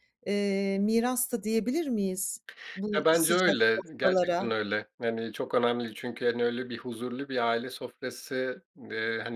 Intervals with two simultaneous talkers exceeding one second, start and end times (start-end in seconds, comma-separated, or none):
2.9-4.4